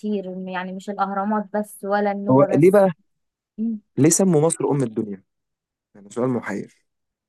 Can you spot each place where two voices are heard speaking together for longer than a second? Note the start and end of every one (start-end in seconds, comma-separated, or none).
none